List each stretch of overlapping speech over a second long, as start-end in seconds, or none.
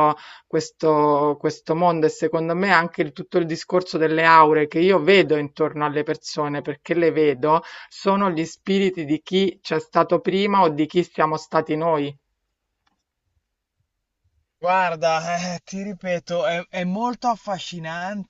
none